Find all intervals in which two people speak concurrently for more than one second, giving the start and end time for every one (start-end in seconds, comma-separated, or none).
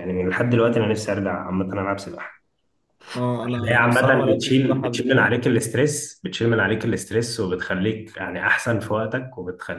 3.4-5.3